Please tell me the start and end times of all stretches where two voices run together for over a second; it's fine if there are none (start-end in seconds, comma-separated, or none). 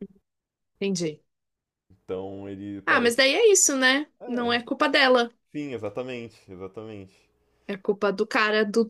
none